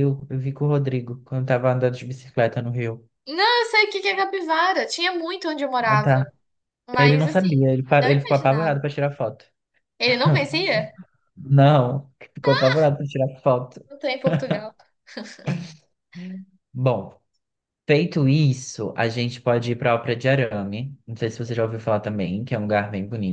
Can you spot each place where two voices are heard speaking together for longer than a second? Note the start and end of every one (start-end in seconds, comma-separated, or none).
7.0-8.8